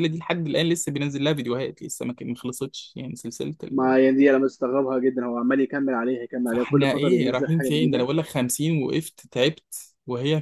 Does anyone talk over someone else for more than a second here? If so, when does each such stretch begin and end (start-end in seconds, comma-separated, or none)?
6.5-8.1